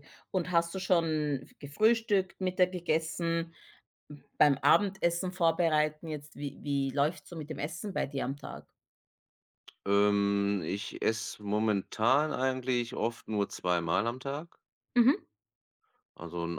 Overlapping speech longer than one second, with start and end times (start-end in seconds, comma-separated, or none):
none